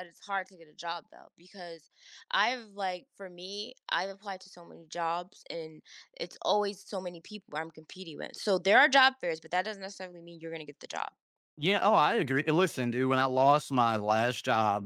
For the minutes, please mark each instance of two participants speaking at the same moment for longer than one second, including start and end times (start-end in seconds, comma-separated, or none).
none